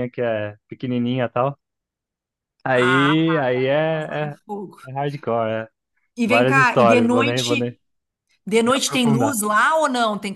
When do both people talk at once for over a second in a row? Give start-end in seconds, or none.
6.2-7.8